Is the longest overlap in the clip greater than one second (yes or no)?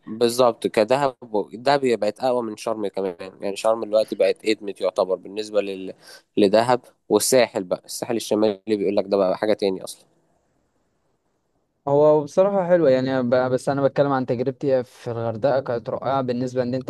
no